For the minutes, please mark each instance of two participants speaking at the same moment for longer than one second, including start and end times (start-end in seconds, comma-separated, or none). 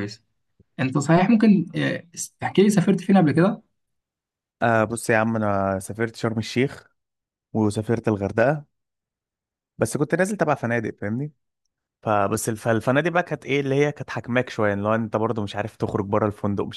none